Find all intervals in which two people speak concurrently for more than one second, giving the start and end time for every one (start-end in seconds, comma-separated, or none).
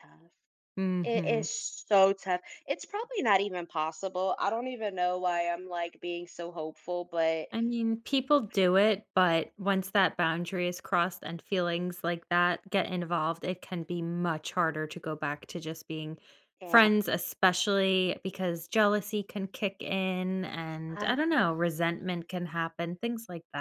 none